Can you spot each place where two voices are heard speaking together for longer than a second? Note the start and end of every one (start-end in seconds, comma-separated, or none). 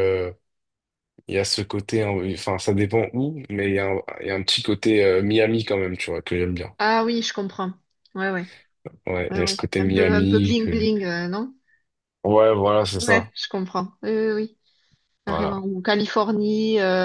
9.3-10.9